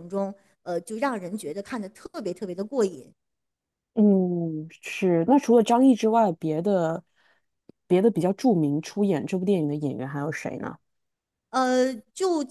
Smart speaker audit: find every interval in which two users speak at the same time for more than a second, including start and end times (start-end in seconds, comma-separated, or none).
none